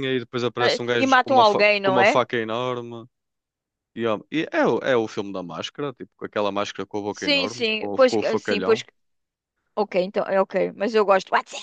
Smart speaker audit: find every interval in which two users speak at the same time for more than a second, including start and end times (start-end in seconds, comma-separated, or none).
0.6-2.2, 7.1-8.8